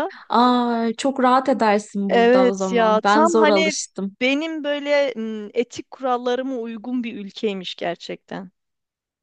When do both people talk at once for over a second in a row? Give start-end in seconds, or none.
2.1-3.7